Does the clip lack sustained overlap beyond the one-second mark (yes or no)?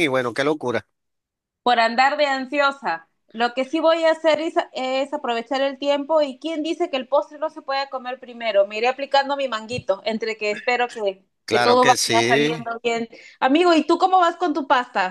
no